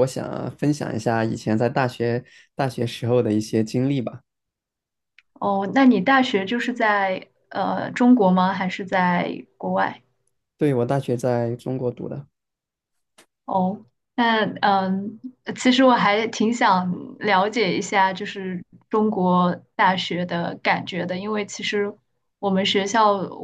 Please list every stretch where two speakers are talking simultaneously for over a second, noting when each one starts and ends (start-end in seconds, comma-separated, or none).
none